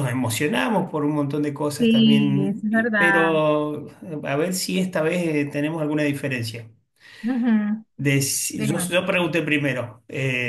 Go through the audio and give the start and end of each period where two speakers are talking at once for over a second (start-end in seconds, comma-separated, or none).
1.8-3.4